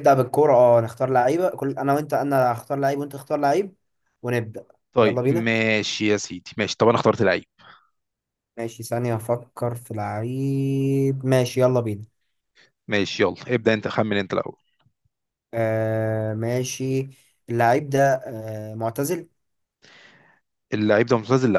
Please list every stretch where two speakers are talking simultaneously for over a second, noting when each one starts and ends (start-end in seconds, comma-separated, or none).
none